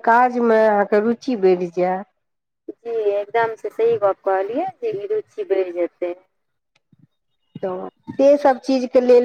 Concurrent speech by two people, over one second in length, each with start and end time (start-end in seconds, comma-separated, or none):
none